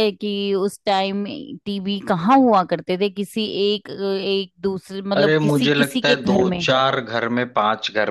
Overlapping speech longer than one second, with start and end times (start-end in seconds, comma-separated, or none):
5.2-6.6